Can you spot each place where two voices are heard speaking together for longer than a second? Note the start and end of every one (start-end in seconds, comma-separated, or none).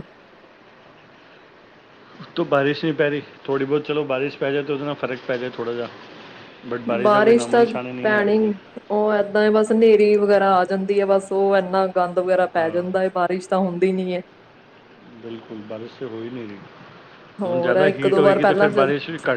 17.4-18.8